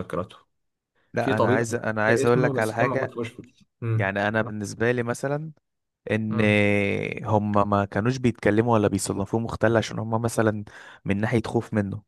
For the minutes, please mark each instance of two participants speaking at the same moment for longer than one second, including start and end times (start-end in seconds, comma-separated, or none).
1.2-3.2